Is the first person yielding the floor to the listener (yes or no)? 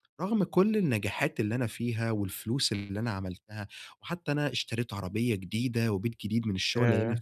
no